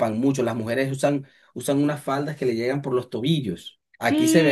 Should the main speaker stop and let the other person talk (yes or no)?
yes